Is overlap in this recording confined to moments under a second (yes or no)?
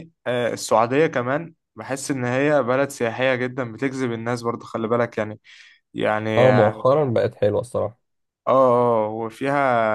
yes